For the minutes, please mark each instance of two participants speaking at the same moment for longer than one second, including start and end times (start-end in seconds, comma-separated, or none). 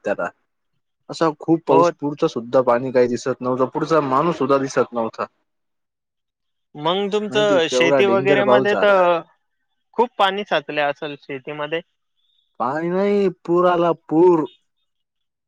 7.3-9.0